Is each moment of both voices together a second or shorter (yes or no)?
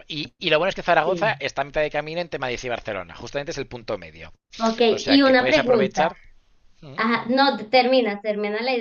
no